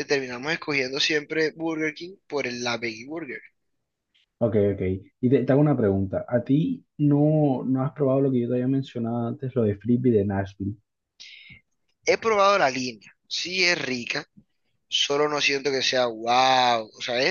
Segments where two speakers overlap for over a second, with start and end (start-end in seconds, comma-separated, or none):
none